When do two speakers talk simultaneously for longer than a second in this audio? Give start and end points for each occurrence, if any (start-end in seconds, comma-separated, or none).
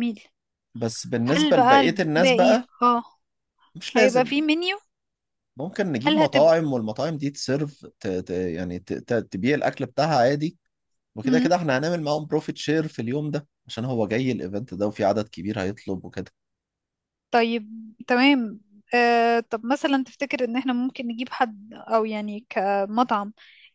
1.3-2.7